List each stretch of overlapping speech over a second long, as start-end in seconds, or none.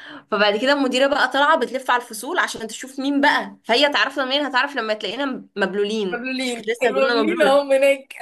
6.1-7.6